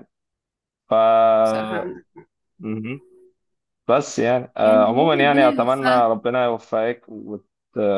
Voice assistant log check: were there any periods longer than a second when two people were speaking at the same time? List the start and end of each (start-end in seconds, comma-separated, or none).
4.6-6.1